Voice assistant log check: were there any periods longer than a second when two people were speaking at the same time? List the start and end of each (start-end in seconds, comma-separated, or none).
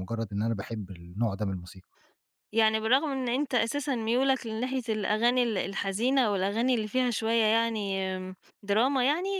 none